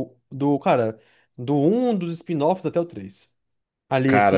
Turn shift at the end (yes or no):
no